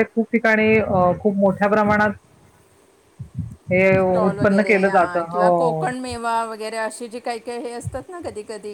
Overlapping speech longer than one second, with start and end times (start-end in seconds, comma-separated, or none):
4.3-5.8